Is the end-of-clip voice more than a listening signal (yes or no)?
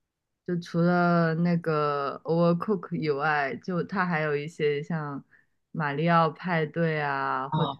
no